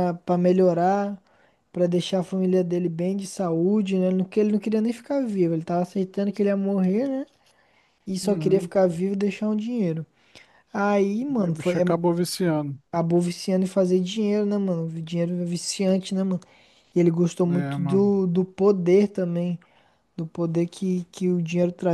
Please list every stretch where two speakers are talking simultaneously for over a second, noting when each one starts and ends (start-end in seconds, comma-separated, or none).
none